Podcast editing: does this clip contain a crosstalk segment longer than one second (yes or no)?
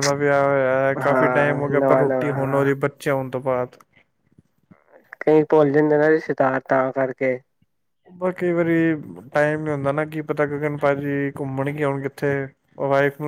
yes